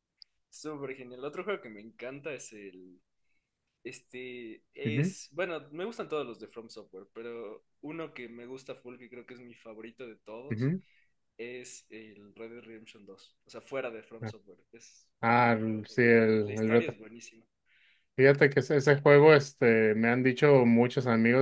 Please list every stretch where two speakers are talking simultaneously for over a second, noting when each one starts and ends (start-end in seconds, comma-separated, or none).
15.2-17.0